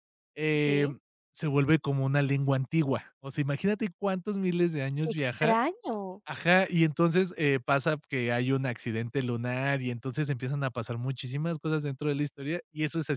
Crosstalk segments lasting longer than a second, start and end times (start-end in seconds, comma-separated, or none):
none